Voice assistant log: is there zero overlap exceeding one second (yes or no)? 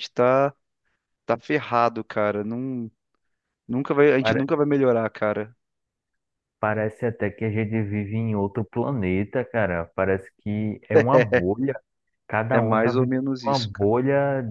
no